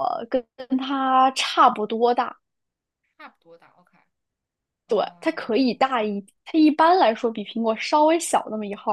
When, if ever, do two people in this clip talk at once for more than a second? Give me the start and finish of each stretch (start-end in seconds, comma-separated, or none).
4.9-6.2